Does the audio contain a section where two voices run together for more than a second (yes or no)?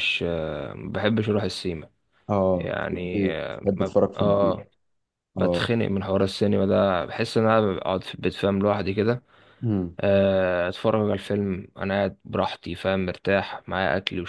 yes